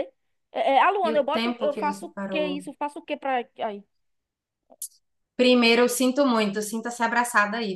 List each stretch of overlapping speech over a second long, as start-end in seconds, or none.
1.1-2.6